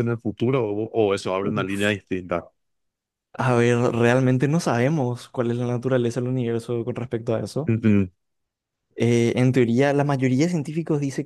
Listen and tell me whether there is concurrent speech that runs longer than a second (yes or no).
no